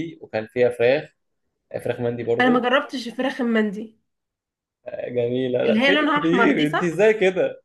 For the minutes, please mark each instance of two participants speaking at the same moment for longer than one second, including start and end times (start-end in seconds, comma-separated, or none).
5.6-6.9